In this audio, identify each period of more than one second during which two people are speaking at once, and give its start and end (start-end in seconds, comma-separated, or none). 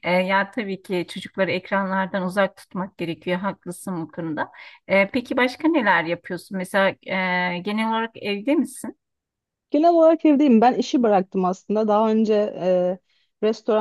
none